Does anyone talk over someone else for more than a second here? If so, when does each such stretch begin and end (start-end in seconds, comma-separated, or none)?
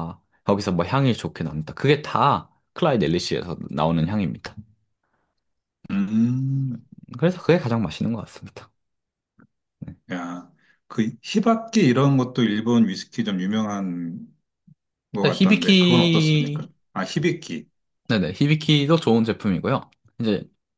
15.2-16.6